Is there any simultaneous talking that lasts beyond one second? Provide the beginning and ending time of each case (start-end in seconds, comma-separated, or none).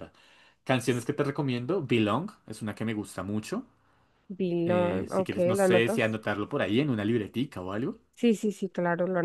4.7-6.0